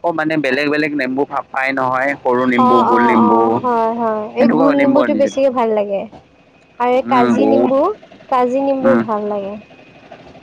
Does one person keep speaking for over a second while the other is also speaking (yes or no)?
yes